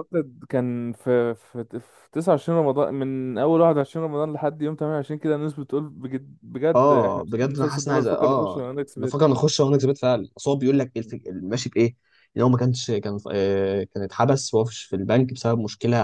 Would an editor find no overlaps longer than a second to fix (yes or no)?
no